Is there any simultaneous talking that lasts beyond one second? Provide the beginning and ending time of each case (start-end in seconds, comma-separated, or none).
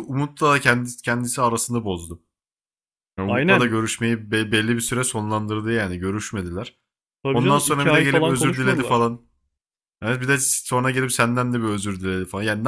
7.3-9.1